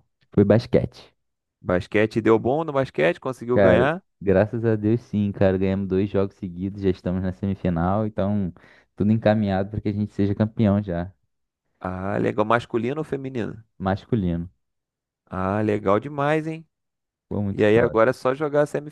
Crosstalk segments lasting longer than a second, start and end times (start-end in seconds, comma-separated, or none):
none